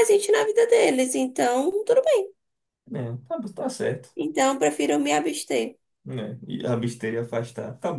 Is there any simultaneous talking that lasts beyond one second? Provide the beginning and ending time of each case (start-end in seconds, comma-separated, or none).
none